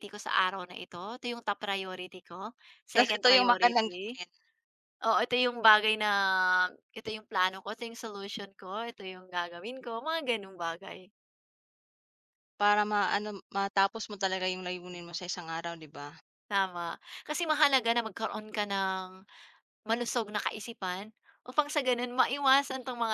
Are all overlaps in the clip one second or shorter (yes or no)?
no